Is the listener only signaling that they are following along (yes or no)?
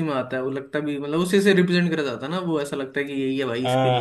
no